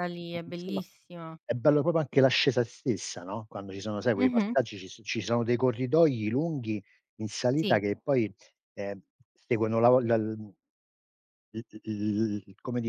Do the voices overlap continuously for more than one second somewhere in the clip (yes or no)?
no